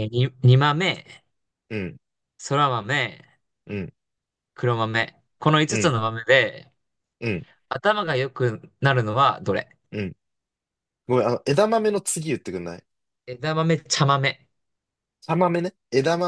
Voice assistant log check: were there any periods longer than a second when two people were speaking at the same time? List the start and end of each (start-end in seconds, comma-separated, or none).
none